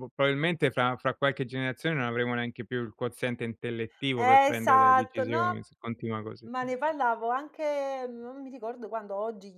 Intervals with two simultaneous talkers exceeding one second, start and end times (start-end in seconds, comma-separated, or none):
4.2-5.7